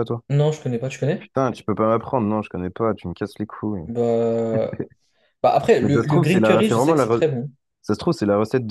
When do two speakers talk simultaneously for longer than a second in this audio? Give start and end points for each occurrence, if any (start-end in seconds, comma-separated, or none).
5.8-7.3